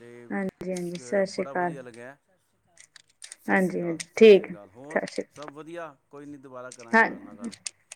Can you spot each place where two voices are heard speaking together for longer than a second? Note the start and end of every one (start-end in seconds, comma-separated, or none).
3.5-5.0